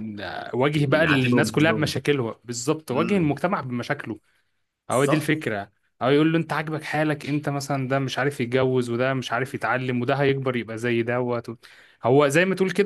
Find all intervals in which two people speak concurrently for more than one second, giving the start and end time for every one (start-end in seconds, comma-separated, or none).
0.7-1.9